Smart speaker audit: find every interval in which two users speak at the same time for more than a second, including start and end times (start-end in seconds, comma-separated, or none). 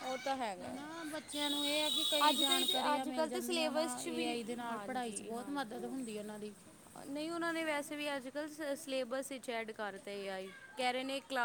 2.3-4.3